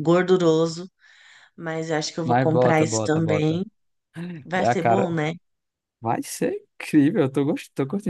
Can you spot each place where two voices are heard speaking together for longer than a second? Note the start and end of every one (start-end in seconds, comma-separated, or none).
2.2-3.6